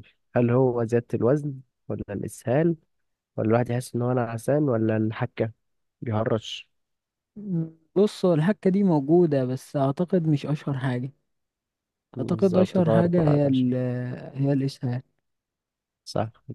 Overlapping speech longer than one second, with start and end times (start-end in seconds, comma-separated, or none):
12.2-13.7